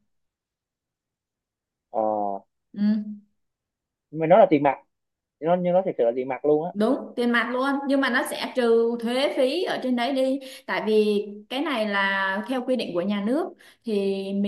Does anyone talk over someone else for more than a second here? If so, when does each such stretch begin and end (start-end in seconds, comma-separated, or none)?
none